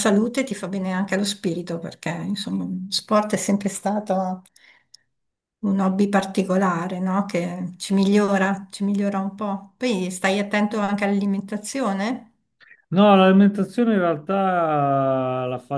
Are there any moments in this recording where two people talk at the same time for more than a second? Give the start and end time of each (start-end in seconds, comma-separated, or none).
none